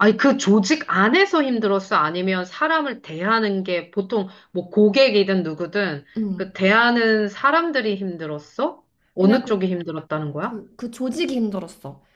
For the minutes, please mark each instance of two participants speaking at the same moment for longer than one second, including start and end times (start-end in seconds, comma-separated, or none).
none